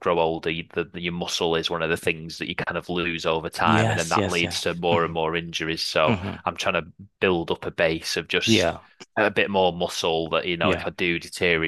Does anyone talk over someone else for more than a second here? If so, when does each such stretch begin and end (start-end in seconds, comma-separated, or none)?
3.6-5.1